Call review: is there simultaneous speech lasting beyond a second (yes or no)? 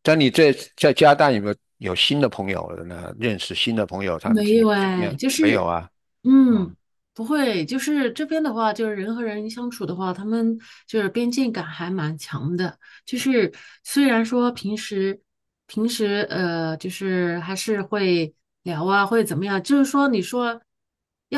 yes